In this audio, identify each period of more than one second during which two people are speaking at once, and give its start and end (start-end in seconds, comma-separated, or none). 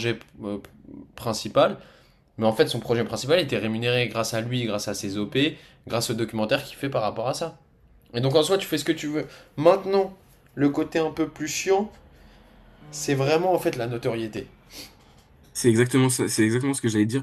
none